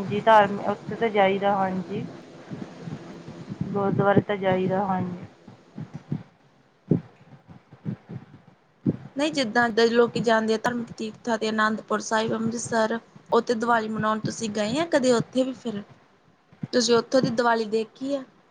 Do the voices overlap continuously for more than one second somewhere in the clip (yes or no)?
no